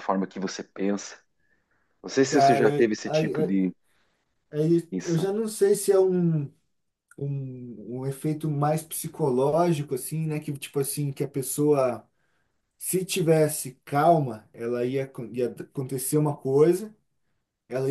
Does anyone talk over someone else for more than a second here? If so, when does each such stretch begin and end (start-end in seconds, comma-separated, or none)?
2.3-3.6